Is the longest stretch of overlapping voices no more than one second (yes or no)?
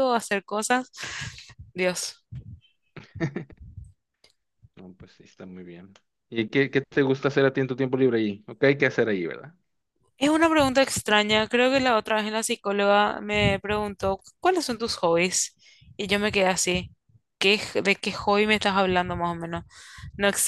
yes